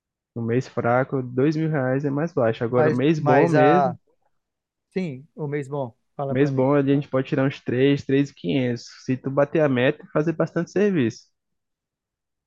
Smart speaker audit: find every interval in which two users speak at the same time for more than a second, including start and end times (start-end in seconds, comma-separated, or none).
2.7-4.0